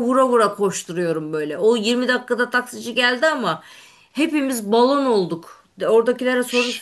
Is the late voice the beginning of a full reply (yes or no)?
no